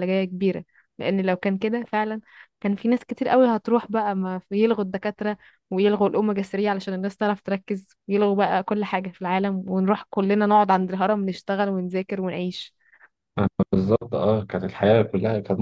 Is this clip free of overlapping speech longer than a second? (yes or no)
yes